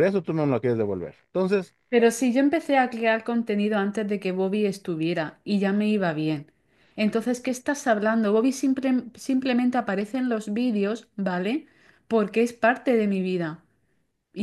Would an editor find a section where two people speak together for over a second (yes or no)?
no